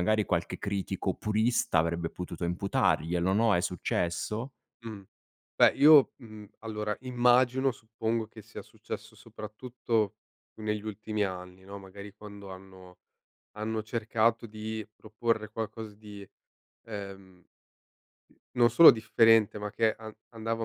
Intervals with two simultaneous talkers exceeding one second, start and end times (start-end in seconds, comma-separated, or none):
none